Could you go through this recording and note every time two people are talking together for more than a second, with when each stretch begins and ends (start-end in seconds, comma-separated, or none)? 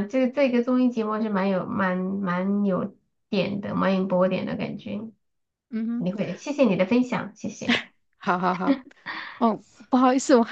none